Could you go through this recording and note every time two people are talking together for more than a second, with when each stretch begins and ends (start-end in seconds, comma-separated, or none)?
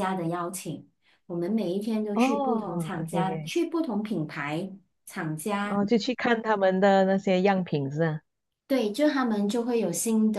2.1-3.5